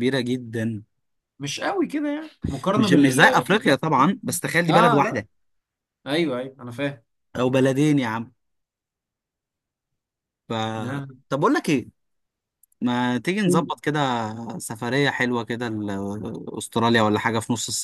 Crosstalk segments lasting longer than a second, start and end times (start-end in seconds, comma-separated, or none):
2.8-4.0